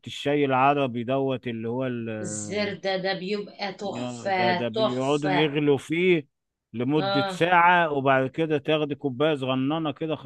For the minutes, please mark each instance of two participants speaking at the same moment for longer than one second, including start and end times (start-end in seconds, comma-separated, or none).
3.9-5.5